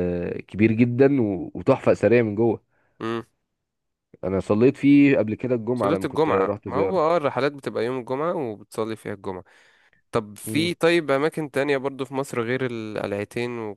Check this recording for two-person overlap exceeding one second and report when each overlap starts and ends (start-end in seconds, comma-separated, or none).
5.7-7.0